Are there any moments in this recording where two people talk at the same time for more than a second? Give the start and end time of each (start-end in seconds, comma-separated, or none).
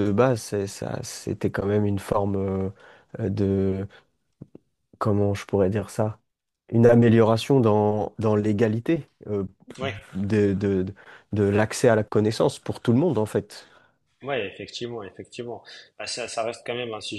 none